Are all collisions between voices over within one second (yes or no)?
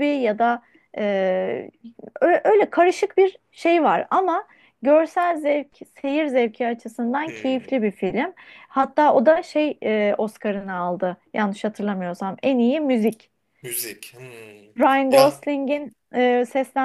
yes